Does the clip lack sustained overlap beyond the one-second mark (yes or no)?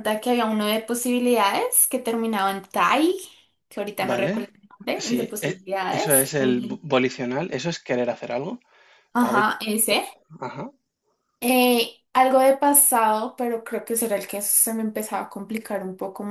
no